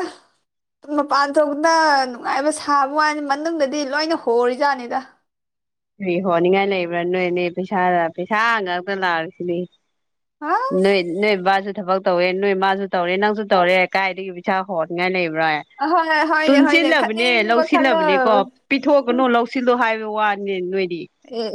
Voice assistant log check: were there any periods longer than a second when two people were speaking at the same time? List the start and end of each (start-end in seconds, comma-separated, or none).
16.4-18.0